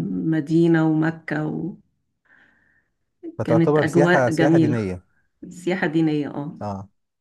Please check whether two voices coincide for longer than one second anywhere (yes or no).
yes